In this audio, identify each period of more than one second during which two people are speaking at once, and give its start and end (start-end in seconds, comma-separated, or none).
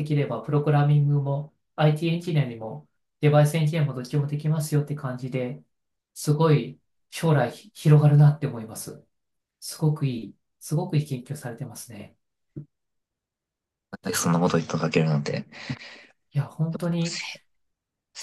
none